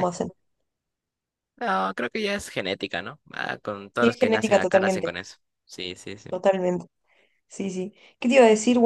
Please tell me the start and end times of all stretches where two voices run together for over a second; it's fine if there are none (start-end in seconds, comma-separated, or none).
3.9-5.1